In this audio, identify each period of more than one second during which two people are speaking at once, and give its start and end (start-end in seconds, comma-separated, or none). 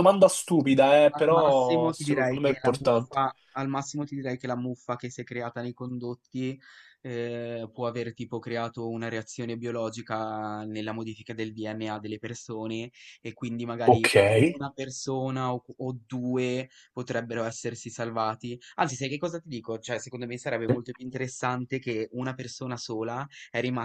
1.1-3.2